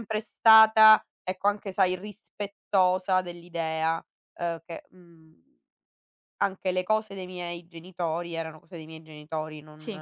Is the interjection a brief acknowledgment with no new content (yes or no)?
yes